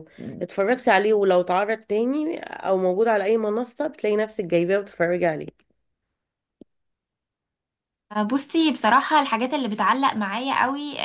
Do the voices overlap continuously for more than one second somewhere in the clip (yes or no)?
no